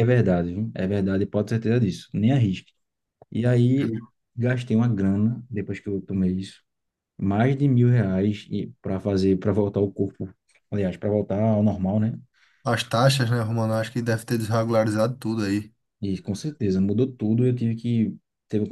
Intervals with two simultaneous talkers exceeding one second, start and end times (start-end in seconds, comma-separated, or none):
none